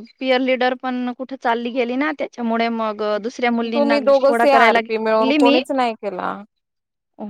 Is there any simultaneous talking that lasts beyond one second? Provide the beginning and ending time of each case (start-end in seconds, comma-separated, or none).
3.7-5.6